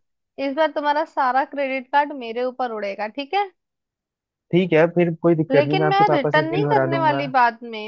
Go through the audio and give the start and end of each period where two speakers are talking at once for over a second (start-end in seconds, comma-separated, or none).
5.5-7.3